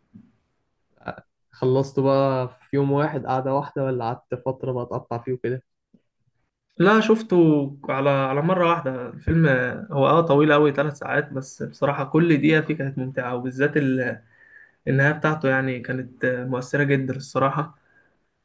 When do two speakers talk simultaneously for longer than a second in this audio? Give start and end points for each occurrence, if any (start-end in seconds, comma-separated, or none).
none